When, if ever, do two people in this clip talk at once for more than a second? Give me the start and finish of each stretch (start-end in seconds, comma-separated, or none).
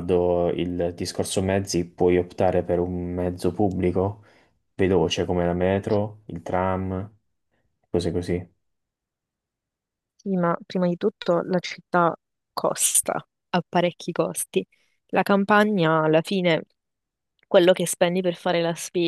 none